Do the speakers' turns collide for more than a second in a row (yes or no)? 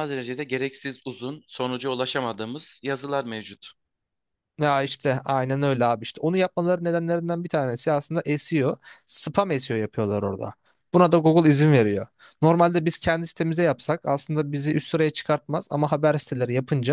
no